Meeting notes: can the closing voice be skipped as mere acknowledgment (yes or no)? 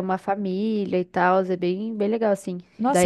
no